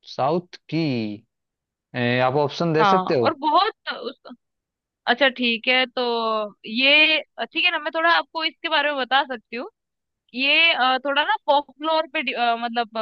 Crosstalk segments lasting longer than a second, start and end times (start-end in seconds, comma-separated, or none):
none